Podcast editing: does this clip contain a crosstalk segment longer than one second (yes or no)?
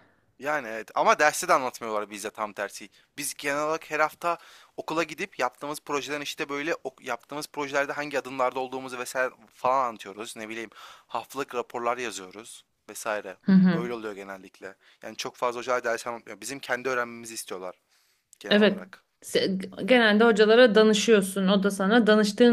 no